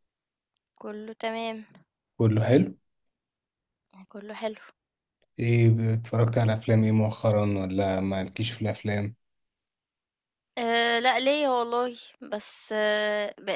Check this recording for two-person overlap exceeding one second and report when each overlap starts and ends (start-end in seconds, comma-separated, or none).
none